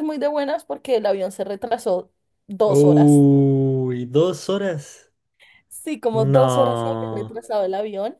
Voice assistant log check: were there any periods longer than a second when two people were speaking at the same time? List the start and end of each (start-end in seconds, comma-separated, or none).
6.1-7.3